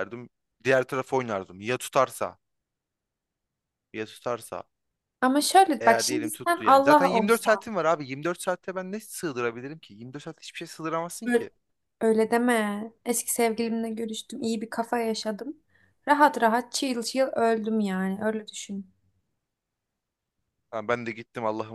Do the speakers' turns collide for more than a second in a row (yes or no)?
yes